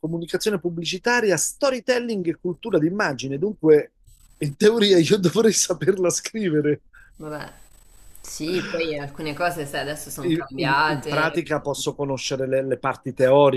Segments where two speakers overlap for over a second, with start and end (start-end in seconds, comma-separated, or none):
10.2-11.4